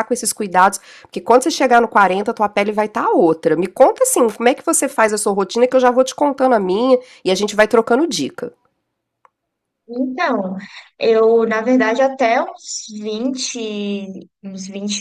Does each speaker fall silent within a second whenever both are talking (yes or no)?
yes